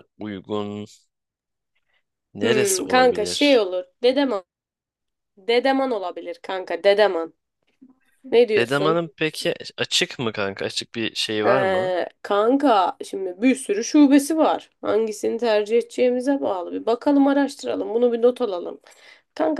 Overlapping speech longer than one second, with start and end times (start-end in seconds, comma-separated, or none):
2.4-3.6